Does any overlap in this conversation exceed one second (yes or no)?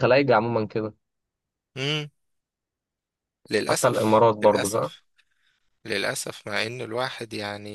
yes